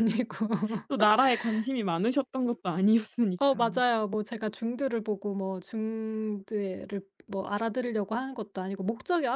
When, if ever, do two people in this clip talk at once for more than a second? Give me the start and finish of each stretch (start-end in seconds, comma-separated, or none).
none